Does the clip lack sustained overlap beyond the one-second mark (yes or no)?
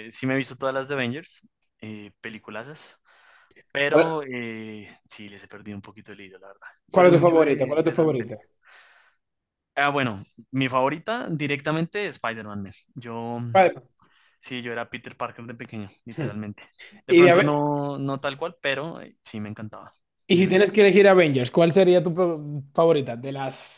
no